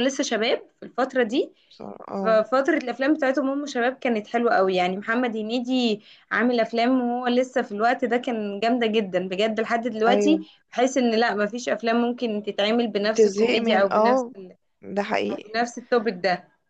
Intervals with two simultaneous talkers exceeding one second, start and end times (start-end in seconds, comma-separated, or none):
13.0-14.3